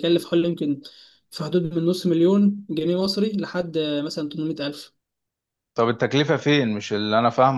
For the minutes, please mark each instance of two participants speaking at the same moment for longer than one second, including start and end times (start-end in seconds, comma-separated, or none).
none